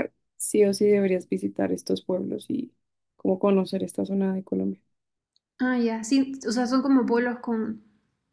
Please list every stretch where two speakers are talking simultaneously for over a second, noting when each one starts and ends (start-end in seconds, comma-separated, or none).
none